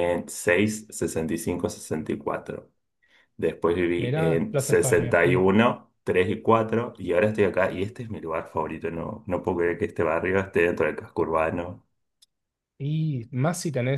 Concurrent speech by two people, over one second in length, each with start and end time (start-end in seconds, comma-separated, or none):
4.0-5.4